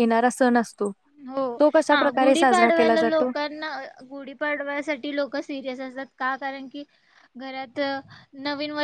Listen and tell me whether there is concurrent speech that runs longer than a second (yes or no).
yes